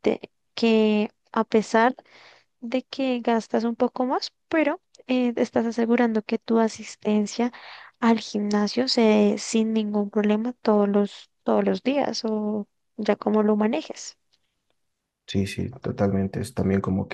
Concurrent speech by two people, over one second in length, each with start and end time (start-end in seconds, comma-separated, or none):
none